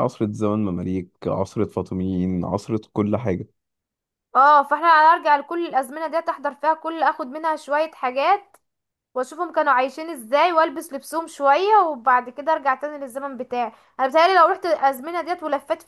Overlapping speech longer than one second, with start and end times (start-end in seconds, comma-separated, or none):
none